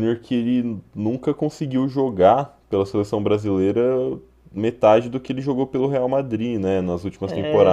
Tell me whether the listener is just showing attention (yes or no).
yes